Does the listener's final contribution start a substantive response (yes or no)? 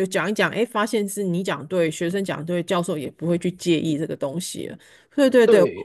yes